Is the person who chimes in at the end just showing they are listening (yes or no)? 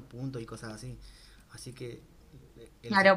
no